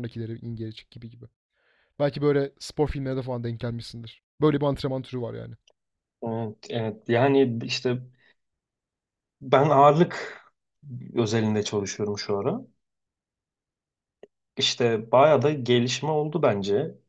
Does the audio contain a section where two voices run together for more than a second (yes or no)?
no